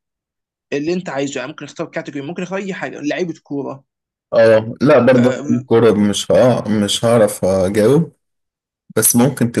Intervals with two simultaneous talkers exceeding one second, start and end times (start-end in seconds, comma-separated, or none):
none